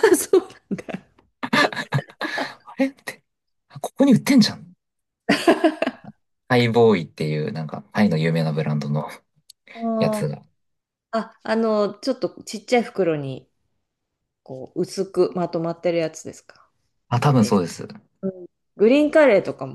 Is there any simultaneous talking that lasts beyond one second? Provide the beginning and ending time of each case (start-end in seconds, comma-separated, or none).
none